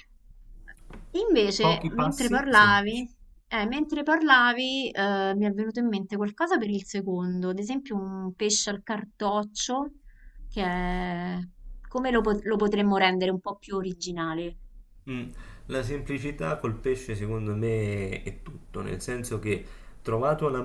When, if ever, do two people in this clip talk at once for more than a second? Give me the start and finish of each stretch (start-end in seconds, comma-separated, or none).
1.6-3.0